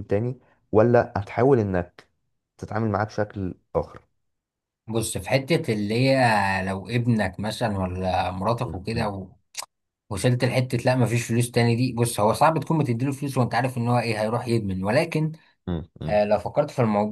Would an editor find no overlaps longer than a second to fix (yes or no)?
yes